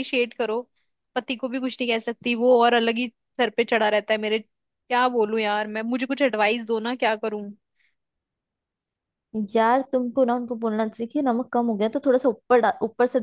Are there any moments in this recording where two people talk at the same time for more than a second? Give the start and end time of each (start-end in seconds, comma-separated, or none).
none